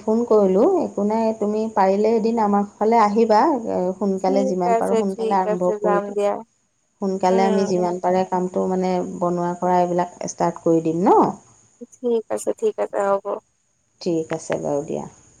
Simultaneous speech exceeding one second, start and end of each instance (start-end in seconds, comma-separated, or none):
4.2-6.3